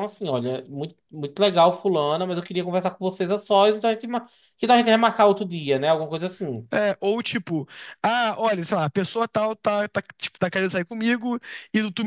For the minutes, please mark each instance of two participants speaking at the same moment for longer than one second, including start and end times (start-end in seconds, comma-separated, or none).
none